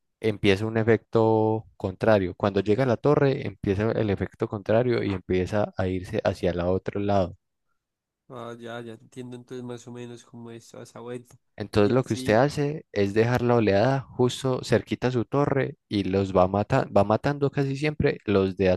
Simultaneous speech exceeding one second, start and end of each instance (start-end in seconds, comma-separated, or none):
none